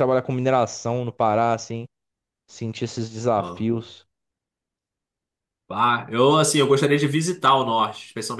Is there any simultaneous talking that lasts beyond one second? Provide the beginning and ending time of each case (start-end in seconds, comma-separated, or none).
none